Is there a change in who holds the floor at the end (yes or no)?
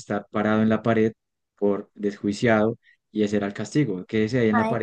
yes